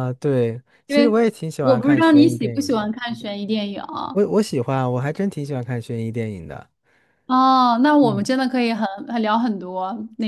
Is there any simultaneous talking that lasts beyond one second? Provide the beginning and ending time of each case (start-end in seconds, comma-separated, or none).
0.9-2.9